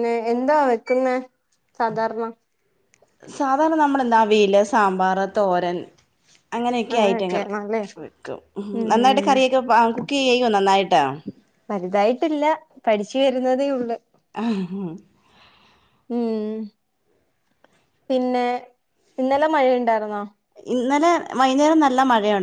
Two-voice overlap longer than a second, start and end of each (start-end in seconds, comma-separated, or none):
none